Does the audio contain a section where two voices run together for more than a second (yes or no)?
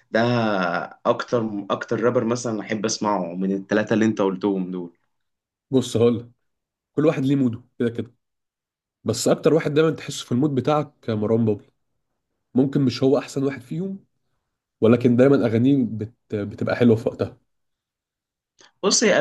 no